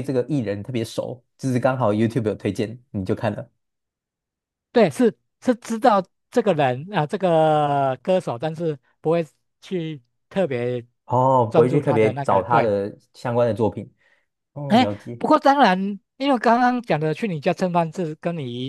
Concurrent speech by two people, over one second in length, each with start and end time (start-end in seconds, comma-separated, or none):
11.5-12.7